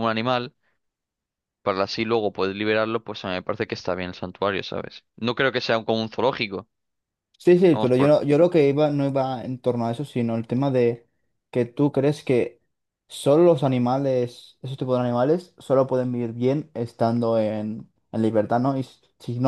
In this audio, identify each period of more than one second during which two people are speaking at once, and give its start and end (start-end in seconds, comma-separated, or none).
none